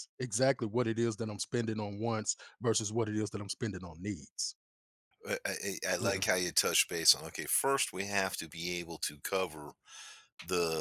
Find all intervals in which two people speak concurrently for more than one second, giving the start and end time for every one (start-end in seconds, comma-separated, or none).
none